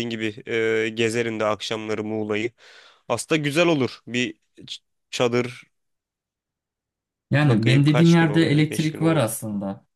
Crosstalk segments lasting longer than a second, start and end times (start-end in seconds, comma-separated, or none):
7.4-9.3